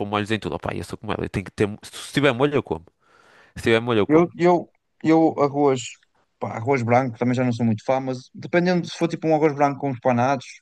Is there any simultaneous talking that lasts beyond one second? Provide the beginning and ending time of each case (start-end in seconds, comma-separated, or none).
none